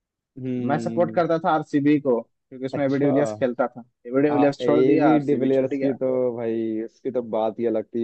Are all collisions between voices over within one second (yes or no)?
no